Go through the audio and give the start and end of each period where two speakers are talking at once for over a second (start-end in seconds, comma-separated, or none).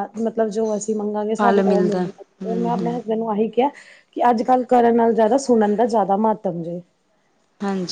1.4-3.0